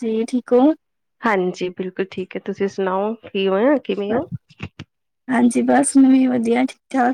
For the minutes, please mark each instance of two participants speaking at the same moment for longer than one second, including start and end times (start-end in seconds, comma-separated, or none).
none